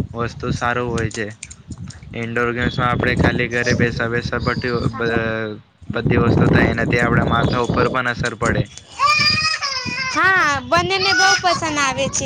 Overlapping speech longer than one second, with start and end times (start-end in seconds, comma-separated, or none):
none